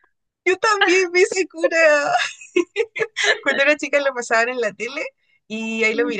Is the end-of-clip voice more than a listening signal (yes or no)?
no